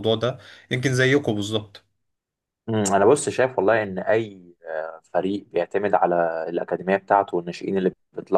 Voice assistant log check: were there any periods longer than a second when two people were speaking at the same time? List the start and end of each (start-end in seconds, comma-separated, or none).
none